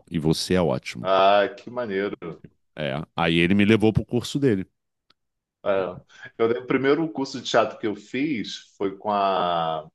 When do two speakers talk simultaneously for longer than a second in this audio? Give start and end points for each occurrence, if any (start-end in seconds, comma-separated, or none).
none